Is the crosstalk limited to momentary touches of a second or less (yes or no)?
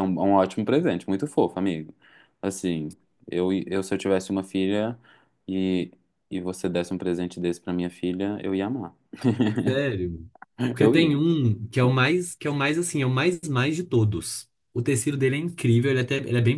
yes